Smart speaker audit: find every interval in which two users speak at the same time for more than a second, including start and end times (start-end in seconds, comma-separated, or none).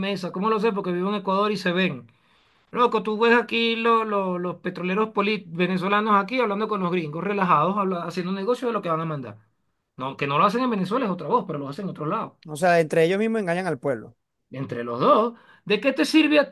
none